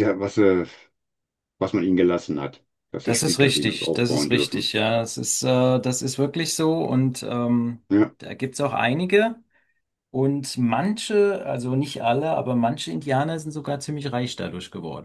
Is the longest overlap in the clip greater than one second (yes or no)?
yes